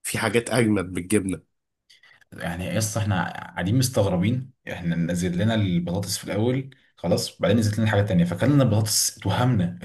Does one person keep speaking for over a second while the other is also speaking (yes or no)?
no